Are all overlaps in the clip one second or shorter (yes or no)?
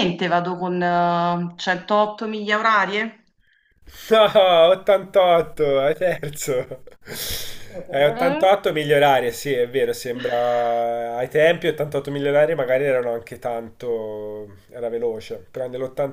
yes